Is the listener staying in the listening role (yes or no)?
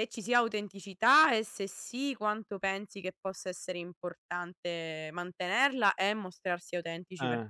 no